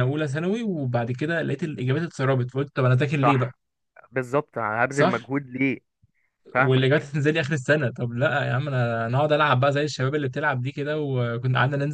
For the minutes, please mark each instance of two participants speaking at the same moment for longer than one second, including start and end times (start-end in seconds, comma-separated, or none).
none